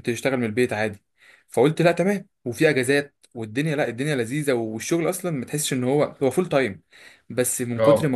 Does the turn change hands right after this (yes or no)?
no